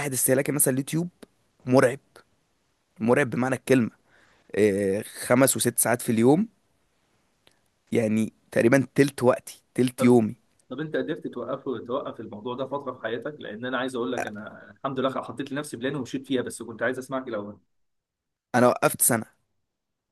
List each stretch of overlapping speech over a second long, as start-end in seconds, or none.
none